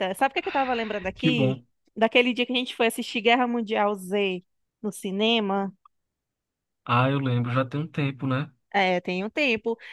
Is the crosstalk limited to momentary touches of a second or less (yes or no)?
yes